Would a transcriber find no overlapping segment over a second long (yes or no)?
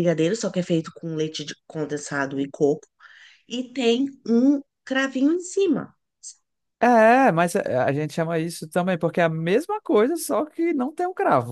yes